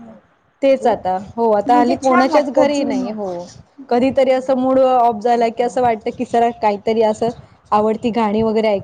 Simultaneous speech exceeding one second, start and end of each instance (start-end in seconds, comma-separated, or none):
1.7-3.1